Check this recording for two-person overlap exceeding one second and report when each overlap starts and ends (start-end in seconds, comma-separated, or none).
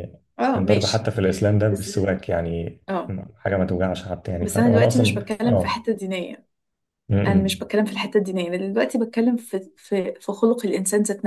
4.4-5.8